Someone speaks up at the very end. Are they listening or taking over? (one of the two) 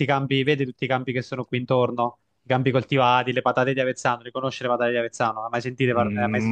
taking over